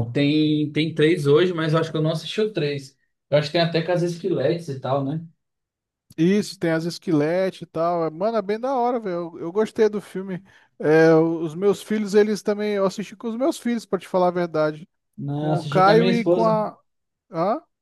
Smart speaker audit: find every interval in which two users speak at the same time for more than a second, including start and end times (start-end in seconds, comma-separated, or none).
15.3-16.6